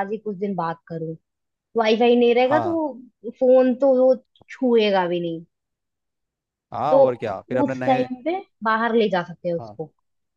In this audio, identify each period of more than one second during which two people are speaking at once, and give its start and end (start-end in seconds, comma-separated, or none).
none